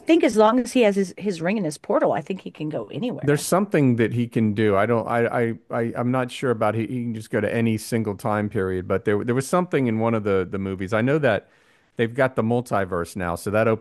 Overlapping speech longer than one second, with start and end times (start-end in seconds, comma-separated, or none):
none